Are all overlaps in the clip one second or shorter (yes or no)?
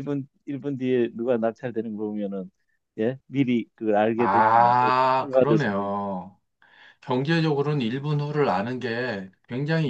no